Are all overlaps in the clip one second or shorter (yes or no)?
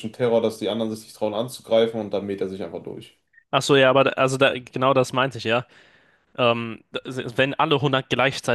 yes